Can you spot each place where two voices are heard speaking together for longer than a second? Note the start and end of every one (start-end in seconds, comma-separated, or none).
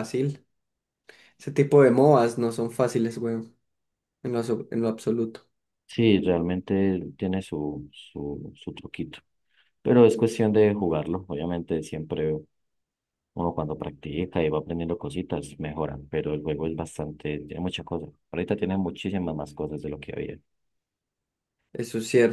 none